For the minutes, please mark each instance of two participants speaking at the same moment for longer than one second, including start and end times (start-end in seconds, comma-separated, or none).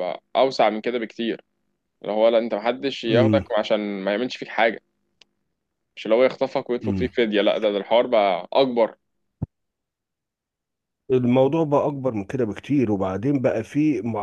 none